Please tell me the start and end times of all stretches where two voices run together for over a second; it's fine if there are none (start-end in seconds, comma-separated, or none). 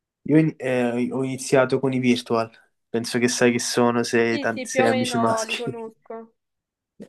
4.3-5.9